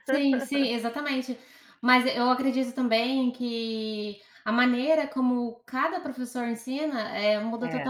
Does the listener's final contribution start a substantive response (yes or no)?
no